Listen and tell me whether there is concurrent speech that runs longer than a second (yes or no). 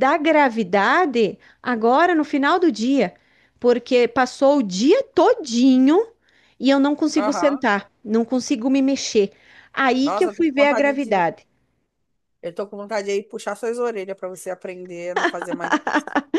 yes